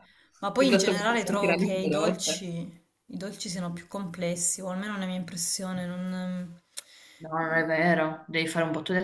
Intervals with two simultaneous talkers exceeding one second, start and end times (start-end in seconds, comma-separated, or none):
0.6-2.5